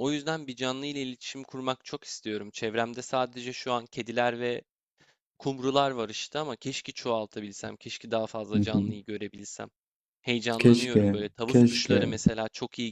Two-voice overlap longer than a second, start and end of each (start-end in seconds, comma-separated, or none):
10.6-12.1